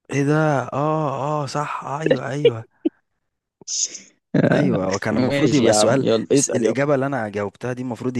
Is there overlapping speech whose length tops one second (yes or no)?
yes